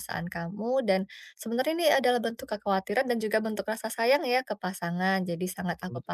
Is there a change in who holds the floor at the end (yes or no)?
no